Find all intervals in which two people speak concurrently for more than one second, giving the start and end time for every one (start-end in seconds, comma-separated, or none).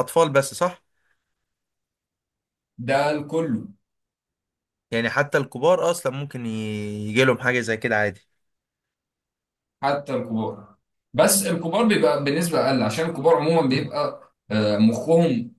none